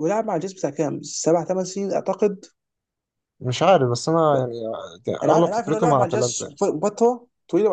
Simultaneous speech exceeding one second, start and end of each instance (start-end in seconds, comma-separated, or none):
5.2-6.4